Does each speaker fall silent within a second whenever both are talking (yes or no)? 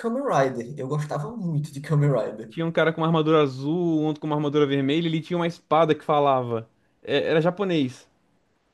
yes